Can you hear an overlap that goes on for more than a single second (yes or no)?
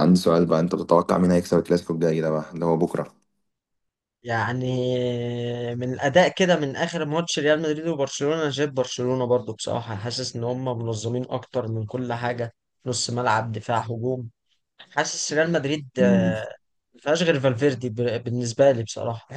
no